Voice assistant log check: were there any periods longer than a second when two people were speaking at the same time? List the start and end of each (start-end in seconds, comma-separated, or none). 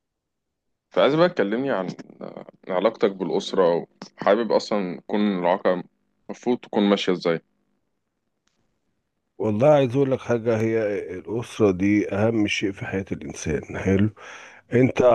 none